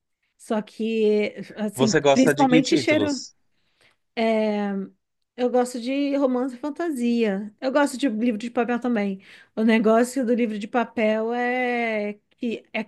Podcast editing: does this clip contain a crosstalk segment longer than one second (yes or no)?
yes